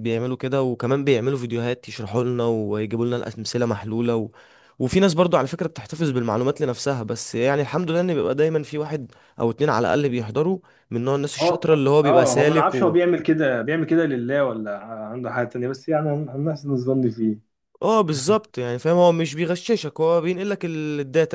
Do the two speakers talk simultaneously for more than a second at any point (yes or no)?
yes